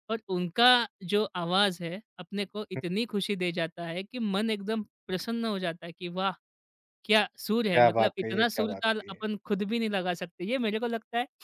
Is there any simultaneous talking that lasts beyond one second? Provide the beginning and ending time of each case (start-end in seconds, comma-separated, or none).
7.7-9.2